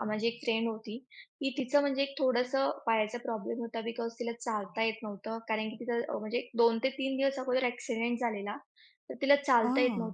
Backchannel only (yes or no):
yes